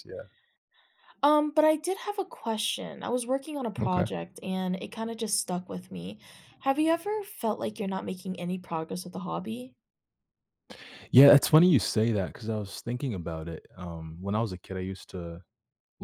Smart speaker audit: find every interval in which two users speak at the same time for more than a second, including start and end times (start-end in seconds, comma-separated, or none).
none